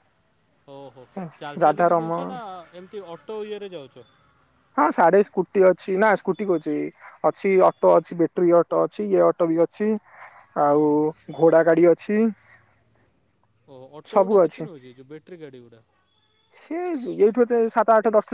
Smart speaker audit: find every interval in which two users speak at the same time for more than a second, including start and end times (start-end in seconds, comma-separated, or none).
none